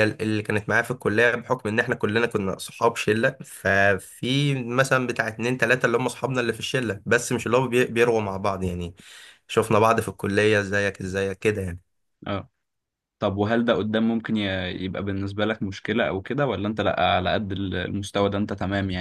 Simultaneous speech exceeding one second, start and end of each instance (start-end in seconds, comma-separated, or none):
none